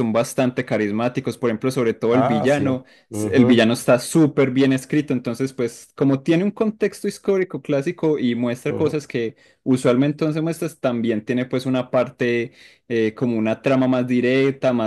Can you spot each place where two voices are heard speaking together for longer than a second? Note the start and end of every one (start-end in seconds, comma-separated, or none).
2.1-3.6